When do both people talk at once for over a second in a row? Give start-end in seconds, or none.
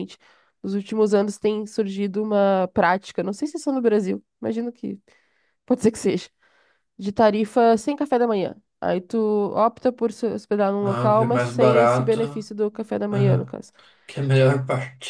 10.8-12.2